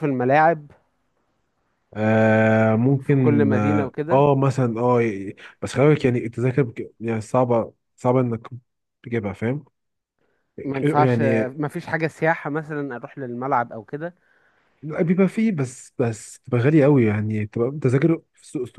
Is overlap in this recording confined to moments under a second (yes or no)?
no